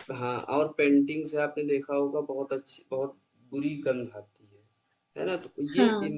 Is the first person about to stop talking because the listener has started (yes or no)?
no